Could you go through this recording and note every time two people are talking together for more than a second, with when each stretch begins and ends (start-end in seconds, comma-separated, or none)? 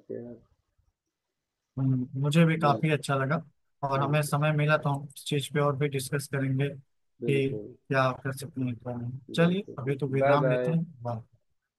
9.3-10.8